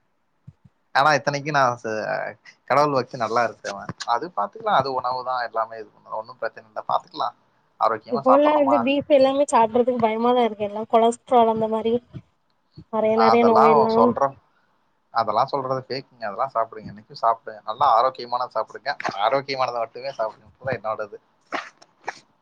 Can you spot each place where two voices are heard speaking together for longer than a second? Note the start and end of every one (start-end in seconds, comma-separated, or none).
none